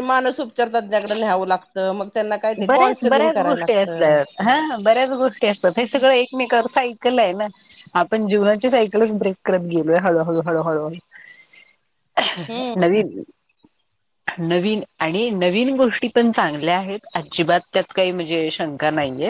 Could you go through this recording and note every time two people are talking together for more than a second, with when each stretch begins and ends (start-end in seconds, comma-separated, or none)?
2.7-4.2